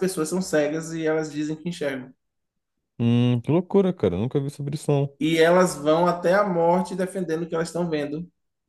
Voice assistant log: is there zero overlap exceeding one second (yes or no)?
yes